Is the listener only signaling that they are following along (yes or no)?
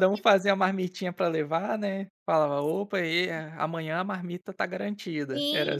no